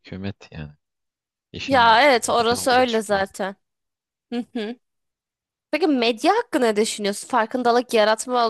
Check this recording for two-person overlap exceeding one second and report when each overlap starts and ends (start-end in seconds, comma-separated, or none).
1.7-3.2